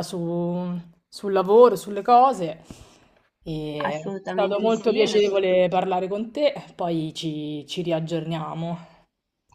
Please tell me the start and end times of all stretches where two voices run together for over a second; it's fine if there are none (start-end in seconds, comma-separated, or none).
3.9-5.5